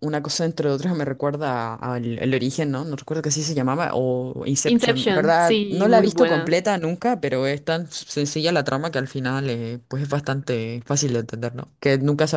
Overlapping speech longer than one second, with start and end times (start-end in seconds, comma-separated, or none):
4.6-6.6